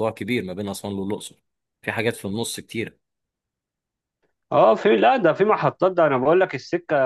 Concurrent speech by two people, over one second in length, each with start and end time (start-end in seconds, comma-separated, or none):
none